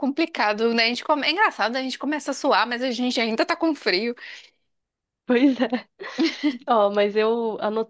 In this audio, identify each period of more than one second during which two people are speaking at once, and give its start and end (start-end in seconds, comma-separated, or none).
none